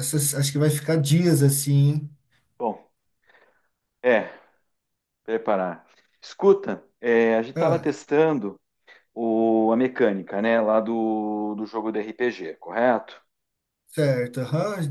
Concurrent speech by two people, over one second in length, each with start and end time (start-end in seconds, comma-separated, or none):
none